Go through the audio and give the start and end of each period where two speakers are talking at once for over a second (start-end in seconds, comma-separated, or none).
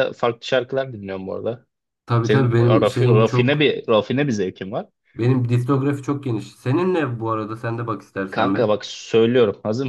2.2-3.7